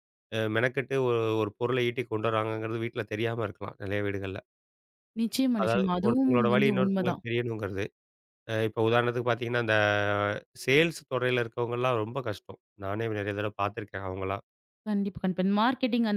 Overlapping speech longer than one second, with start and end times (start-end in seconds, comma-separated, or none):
5.6-7.2